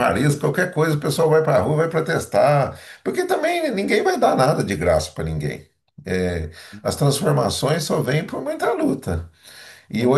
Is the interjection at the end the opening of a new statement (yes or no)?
no